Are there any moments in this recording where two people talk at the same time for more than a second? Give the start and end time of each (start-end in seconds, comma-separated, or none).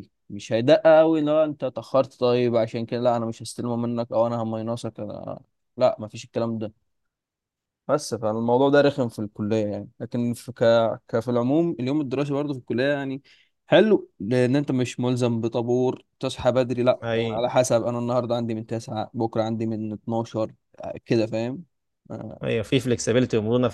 none